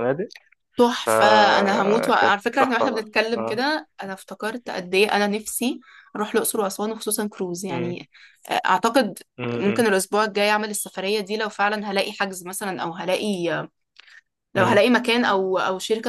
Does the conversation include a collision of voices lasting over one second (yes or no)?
yes